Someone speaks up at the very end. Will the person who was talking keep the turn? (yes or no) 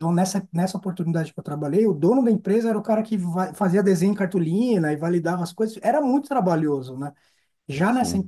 yes